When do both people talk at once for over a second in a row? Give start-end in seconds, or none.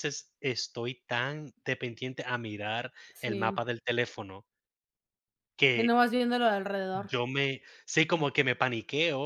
none